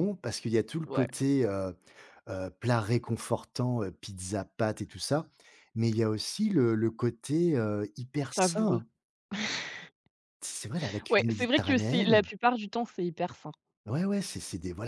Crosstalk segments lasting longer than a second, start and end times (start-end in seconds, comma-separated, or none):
11.1-12.3